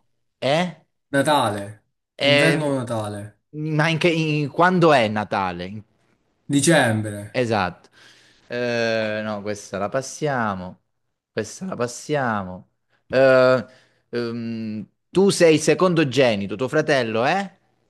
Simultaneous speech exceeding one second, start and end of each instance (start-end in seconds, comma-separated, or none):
none